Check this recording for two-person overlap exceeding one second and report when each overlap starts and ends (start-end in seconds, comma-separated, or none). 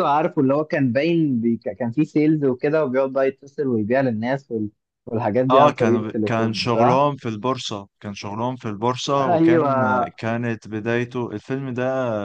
5.5-7.1